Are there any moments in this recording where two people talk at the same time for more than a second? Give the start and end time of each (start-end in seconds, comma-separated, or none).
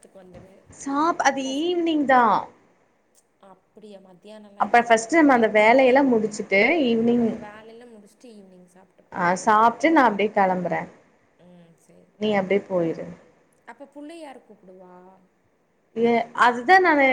none